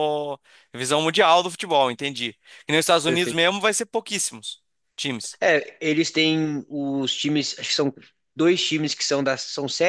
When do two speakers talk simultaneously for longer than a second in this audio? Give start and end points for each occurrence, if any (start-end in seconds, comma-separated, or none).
none